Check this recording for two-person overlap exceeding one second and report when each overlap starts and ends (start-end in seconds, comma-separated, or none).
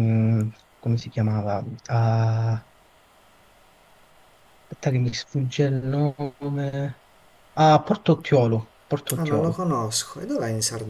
none